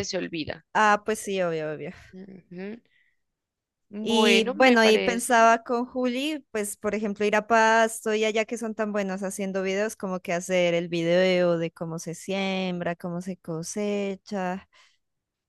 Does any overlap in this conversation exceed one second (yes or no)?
yes